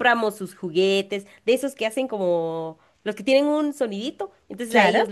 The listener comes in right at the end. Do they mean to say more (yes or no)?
no